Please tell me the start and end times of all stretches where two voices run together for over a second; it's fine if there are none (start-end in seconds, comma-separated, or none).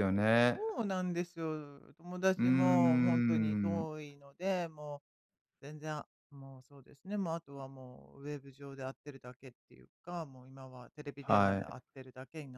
2.4-3.9